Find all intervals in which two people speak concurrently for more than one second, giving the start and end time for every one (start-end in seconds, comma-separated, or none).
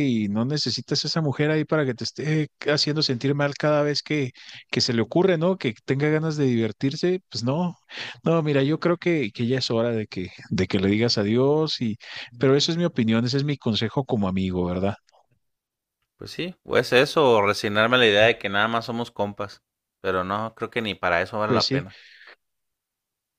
none